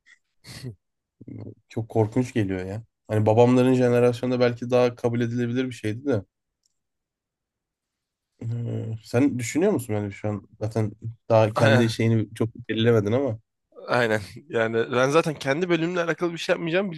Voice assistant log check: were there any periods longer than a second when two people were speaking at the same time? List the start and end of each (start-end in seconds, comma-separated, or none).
none